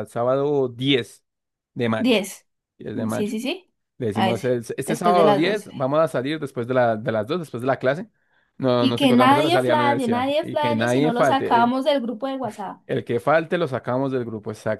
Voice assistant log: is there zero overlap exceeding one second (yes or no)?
no